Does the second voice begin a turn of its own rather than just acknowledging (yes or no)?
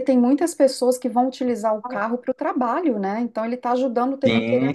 no